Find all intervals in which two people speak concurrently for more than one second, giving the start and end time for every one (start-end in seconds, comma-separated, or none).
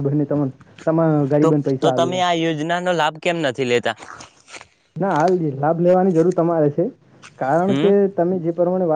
none